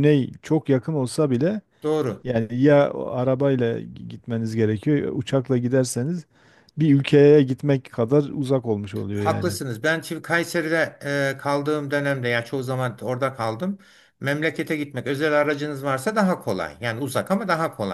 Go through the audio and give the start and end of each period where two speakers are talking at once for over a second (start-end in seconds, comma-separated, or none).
none